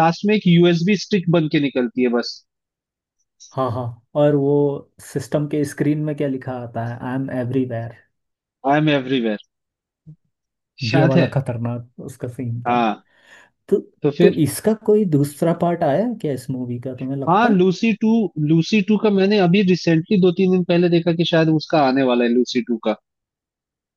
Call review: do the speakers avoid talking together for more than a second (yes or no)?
yes